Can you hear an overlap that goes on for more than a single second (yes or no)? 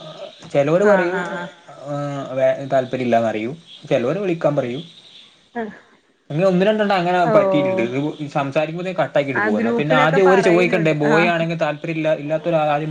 yes